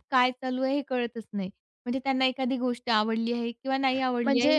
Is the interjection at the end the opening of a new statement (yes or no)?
yes